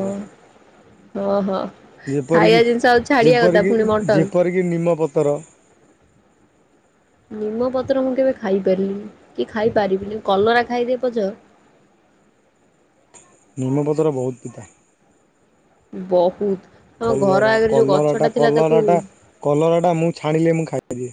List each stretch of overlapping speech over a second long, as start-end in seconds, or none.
17.1-18.8